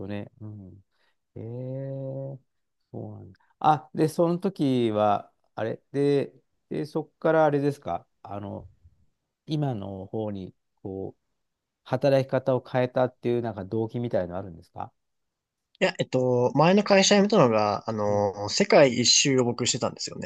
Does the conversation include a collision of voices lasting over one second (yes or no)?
no